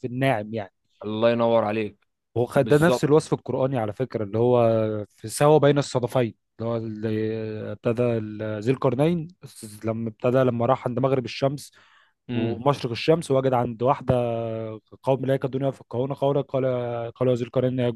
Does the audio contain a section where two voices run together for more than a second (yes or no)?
no